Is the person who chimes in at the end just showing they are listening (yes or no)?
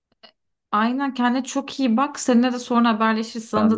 yes